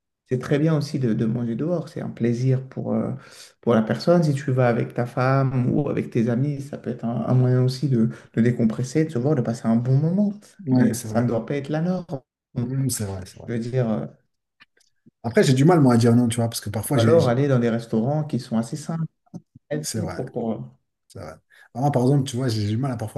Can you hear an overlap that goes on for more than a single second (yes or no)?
no